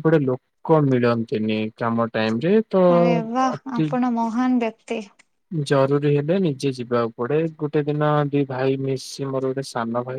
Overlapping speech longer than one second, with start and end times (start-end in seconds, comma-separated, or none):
none